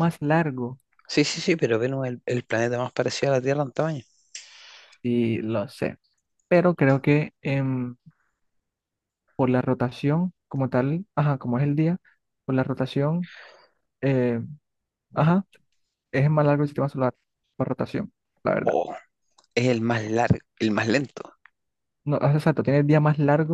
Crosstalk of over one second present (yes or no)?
no